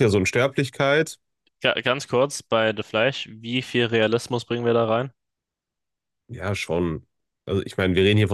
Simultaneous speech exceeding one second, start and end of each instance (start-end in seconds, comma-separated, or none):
none